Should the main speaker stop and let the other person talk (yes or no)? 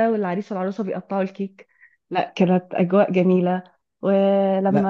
no